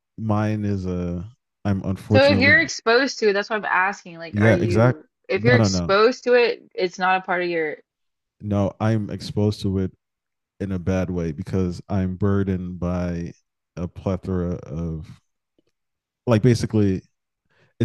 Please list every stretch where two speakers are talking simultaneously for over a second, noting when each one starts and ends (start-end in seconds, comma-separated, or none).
4.3-6.0